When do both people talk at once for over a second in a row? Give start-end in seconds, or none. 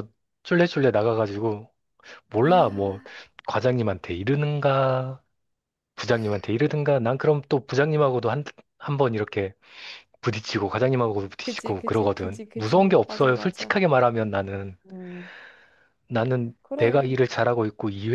11.4-13.7